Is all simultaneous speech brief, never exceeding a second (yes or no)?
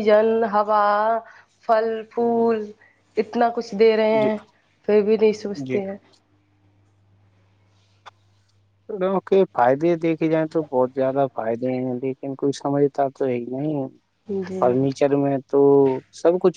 yes